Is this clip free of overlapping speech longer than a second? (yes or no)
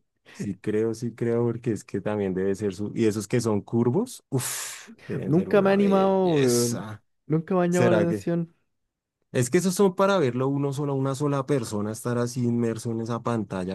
no